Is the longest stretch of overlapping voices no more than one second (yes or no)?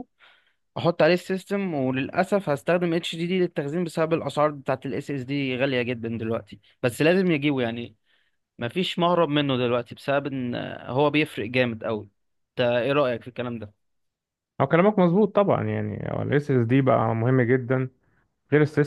yes